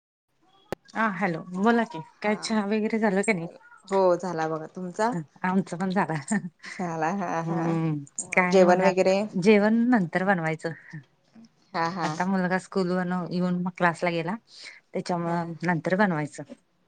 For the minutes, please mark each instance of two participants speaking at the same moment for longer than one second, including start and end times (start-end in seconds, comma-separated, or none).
7.4-9.2